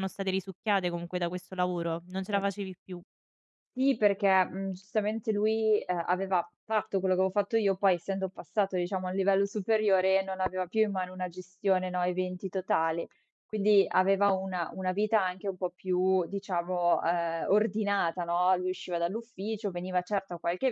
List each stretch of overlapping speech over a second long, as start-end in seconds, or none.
none